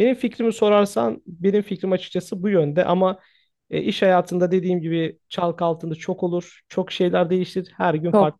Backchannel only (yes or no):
no